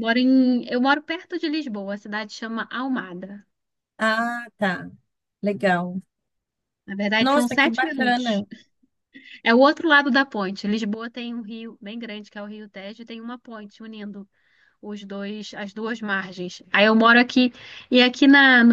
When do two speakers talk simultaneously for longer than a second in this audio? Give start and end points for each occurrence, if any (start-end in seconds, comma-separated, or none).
7.2-8.4